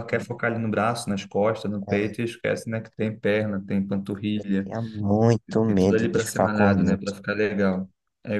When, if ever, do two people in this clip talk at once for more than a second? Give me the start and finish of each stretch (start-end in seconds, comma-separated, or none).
5.6-7.1